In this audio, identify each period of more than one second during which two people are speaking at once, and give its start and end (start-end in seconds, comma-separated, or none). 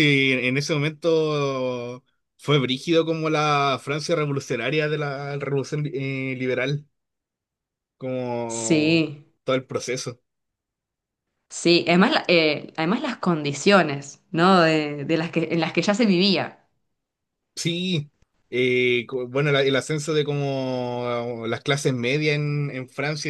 none